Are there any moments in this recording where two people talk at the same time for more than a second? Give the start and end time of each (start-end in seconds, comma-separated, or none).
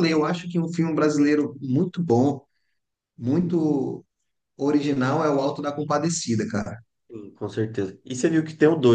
none